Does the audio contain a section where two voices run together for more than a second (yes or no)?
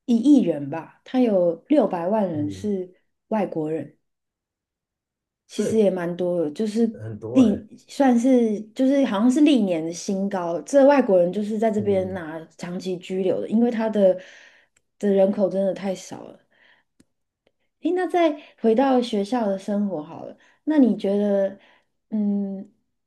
no